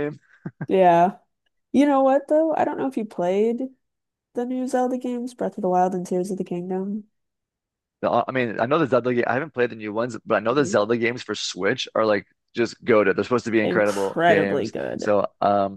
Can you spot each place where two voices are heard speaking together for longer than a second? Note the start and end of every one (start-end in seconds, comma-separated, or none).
13.6-15.1